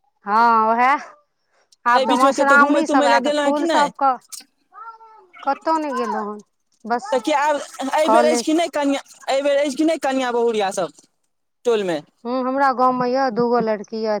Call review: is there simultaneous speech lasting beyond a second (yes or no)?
yes